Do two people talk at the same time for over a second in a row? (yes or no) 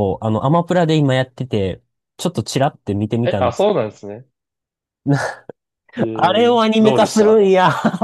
yes